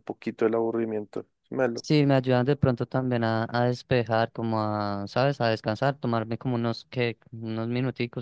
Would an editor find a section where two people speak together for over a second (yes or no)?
no